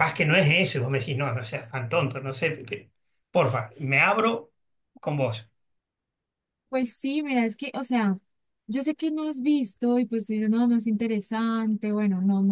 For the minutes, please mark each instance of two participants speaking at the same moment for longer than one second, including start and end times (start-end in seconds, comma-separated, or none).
none